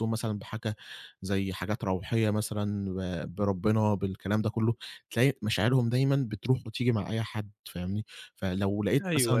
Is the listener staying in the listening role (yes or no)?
no